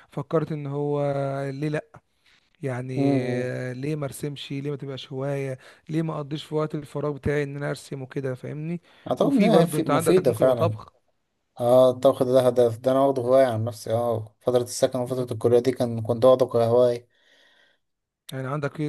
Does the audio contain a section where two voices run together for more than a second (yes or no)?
yes